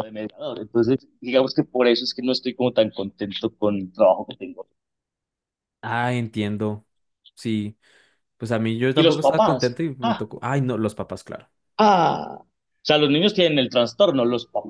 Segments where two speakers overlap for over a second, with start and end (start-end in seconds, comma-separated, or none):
8.9-10.3